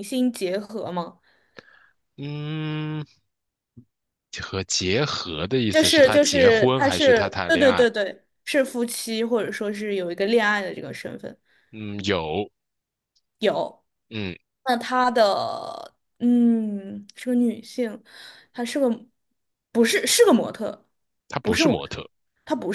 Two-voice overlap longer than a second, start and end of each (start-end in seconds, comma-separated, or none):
5.7-7.9